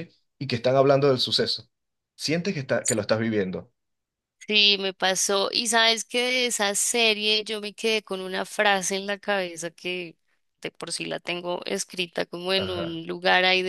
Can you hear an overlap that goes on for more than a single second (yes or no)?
no